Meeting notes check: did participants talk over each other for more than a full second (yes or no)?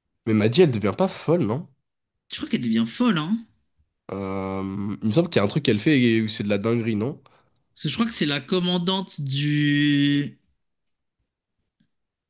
no